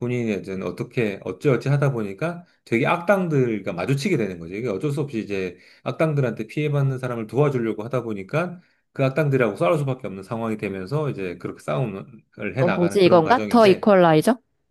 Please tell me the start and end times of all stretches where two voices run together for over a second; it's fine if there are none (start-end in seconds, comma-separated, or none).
12.6-13.9